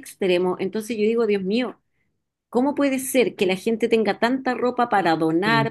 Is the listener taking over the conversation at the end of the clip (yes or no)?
no